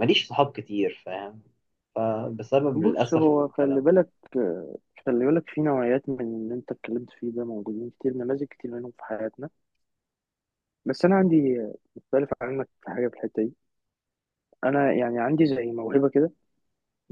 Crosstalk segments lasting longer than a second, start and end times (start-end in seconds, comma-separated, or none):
2.7-4.0